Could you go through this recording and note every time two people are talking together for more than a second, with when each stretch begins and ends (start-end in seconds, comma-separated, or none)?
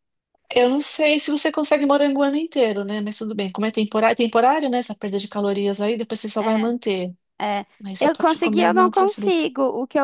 7.8-9.5